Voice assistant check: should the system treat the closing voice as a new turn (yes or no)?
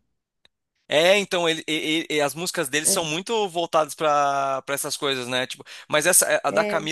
no